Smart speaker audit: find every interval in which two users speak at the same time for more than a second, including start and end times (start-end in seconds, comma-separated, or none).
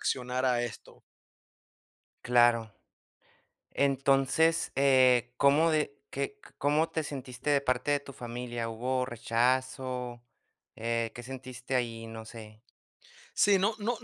none